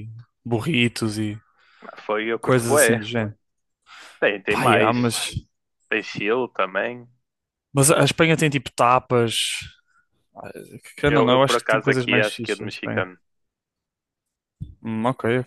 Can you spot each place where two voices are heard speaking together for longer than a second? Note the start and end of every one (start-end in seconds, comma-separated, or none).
11.1-13.1